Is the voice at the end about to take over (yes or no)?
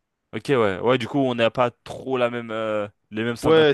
yes